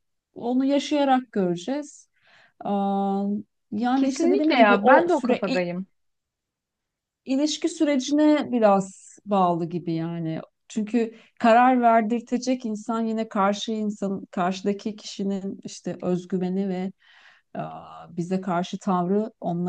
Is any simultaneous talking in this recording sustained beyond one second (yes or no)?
yes